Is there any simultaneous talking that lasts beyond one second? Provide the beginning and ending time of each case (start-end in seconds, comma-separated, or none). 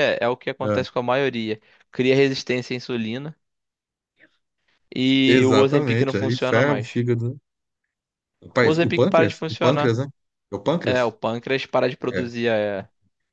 5.3-6.9, 8.6-9.9